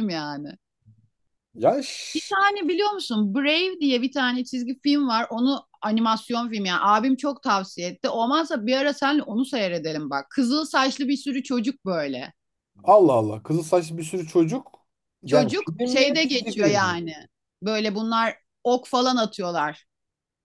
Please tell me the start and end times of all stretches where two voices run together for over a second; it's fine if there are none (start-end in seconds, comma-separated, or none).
15.2-17.0